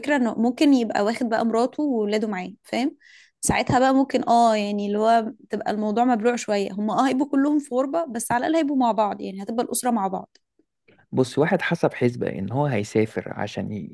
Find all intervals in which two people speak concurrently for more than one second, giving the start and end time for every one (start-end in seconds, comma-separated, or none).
none